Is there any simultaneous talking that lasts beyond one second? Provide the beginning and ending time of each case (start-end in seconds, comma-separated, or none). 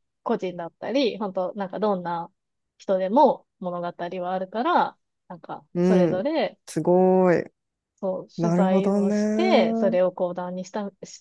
8.4-10.0